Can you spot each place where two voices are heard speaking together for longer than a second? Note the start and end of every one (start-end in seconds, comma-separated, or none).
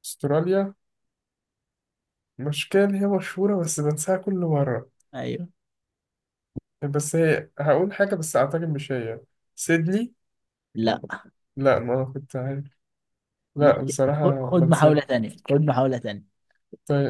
13.6-15.1